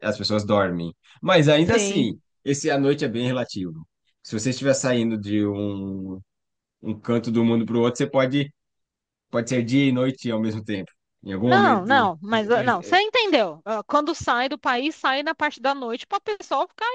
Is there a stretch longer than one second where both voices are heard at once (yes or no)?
yes